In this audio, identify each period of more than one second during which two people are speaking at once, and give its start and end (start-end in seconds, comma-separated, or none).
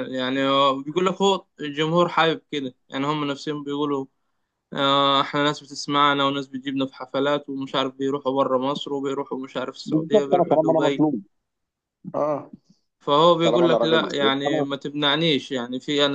9.8-11.1, 13.4-14.7